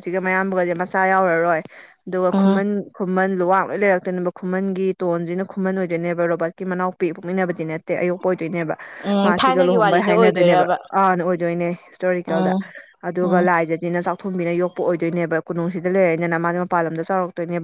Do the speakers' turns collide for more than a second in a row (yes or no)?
yes